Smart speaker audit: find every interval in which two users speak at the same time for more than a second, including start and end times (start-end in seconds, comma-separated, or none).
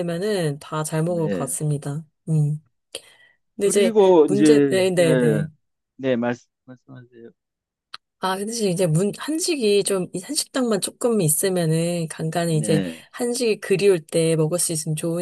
3.6-5.5